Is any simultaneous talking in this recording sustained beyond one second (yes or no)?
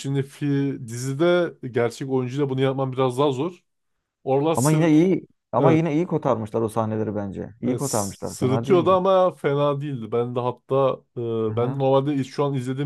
yes